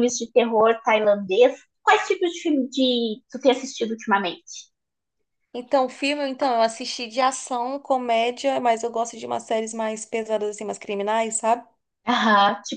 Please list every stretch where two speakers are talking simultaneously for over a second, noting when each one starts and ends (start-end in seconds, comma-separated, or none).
none